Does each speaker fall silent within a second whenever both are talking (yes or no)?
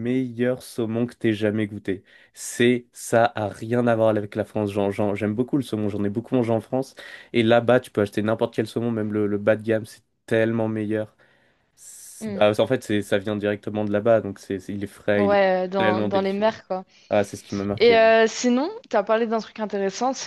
no